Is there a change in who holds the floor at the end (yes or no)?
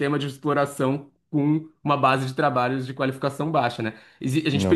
no